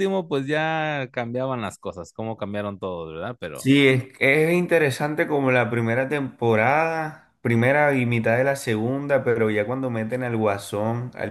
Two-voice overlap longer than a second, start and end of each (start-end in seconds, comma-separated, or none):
none